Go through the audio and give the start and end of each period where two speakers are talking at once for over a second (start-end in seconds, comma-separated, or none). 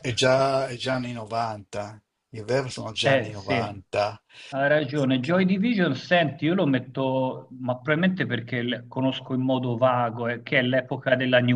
none